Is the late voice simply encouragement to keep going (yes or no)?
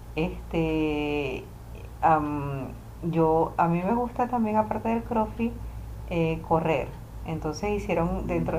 yes